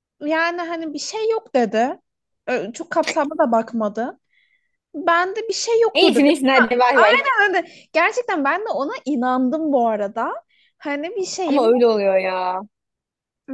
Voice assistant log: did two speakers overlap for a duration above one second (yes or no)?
no